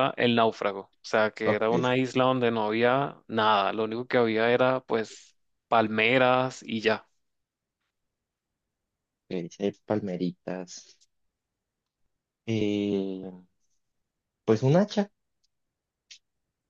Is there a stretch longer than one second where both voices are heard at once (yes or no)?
no